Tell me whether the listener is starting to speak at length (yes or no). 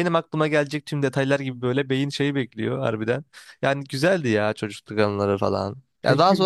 no